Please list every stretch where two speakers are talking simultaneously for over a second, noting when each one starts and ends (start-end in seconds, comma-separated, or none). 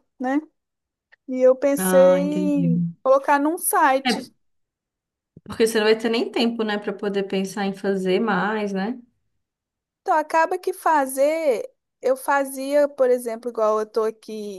none